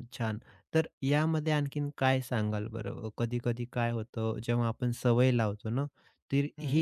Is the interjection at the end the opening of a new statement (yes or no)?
no